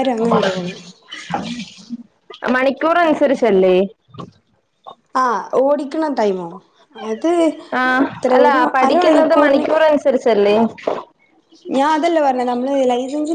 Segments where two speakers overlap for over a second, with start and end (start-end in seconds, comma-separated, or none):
7.8-9.6